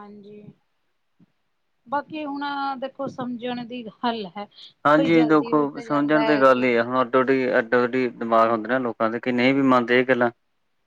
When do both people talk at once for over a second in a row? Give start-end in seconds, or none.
5.0-6.7